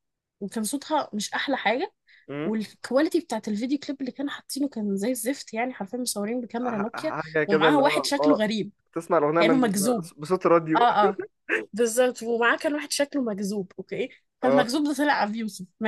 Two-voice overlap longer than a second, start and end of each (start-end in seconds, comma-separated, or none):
6.6-8.4